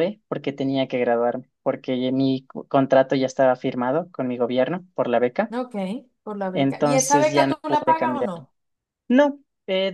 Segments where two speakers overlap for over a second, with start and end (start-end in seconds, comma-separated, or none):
6.5-8.3